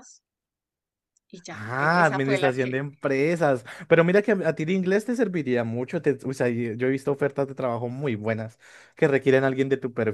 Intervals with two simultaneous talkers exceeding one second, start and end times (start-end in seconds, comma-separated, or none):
1.5-2.8